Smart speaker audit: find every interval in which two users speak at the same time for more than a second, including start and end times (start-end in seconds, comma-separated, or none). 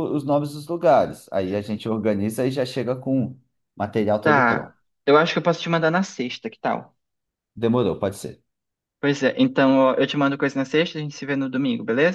none